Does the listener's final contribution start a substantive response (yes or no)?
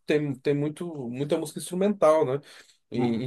yes